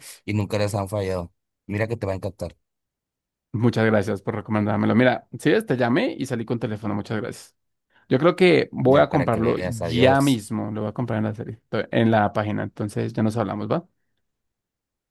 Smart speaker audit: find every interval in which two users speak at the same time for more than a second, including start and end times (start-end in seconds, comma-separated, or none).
8.8-10.4